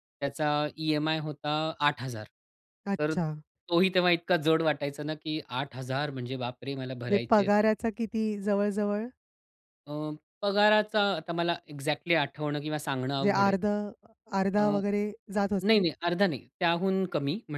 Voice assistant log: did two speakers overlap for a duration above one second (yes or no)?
no